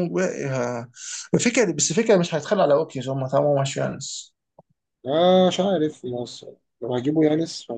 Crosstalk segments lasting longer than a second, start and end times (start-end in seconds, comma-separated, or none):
none